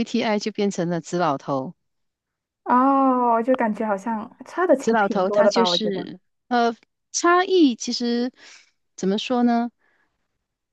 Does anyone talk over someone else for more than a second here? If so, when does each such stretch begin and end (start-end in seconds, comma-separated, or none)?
4.8-6.1